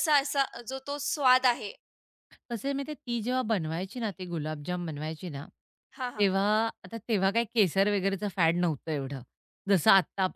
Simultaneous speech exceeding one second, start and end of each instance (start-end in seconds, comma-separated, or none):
none